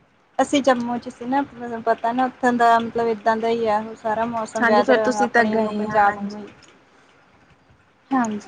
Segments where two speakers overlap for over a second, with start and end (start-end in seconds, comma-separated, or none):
4.6-6.4